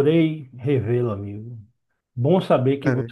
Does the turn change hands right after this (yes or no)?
no